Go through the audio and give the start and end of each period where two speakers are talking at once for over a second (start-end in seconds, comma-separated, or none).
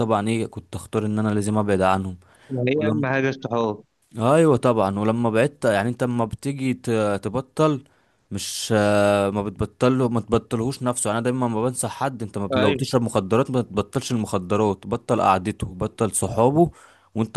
none